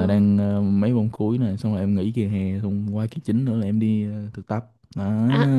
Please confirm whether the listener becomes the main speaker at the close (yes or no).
yes